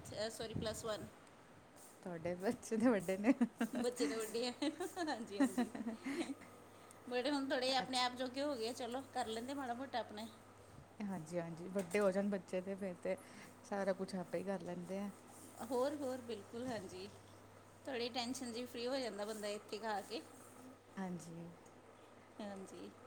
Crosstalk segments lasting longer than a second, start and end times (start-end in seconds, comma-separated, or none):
none